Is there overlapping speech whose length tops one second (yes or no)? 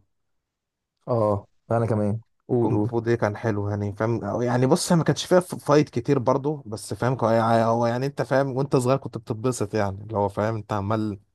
no